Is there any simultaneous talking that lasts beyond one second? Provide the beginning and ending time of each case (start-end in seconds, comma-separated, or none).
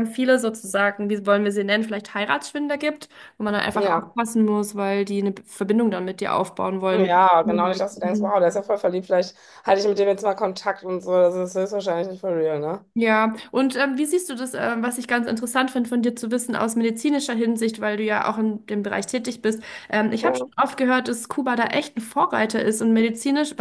6.9-8.4